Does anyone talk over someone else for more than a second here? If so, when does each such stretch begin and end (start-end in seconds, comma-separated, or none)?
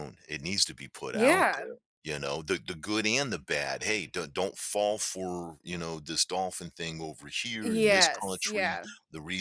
7.6-8.9